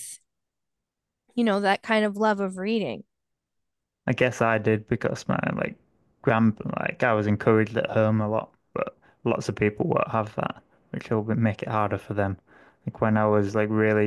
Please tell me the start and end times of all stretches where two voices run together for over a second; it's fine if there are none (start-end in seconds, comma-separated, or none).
none